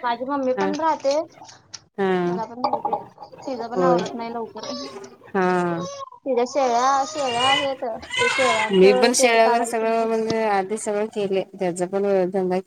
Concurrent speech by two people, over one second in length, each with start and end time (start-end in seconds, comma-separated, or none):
8.7-10.1